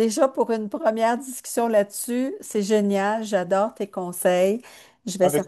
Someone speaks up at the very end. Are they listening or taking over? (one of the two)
listening